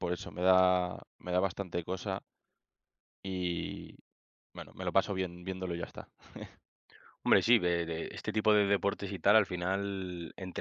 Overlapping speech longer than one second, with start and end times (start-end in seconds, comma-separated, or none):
none